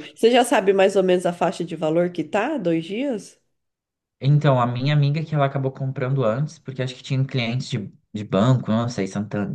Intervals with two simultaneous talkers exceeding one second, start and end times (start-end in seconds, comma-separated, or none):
none